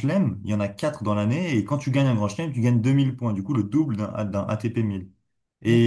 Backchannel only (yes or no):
yes